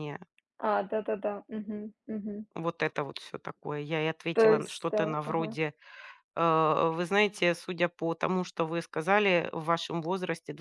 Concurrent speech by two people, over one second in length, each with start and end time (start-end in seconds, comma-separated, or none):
4.3-5.5